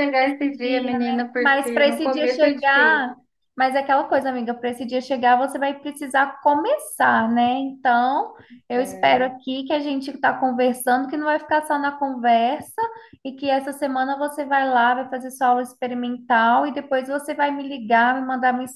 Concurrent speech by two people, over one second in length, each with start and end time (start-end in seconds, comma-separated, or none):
0.6-3.1